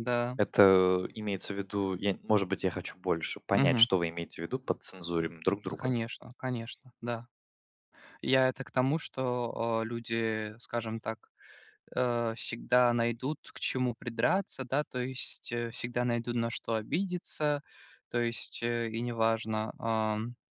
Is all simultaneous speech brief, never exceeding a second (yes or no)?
yes